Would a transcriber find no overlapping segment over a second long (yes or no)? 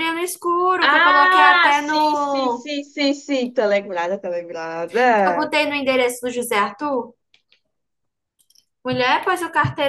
no